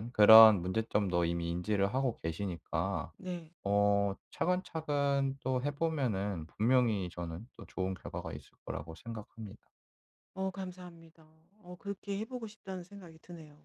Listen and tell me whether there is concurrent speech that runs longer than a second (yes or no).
no